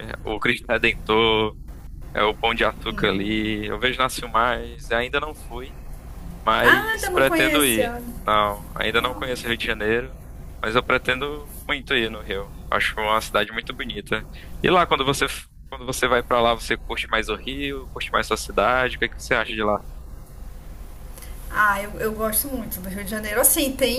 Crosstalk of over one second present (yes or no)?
yes